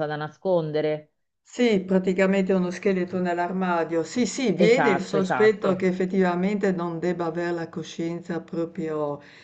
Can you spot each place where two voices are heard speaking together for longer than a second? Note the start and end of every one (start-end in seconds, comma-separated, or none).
4.5-5.9